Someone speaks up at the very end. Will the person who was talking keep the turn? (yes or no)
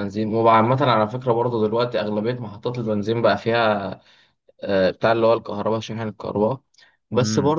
yes